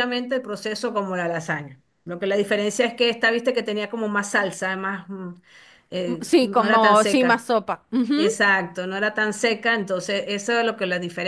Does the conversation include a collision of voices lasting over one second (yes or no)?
yes